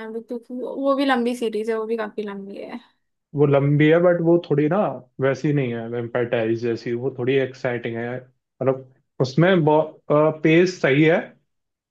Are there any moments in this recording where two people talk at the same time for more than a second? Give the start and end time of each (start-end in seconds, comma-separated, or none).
none